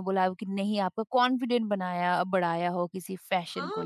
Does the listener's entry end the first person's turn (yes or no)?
yes